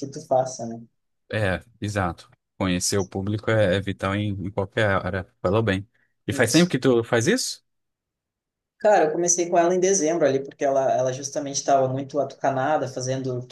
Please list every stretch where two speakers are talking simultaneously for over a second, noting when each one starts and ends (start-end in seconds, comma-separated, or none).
none